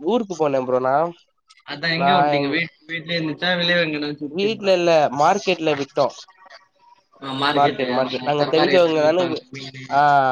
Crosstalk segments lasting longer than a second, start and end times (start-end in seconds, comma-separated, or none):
7.6-9.4